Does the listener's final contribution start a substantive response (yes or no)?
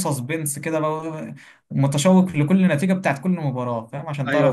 yes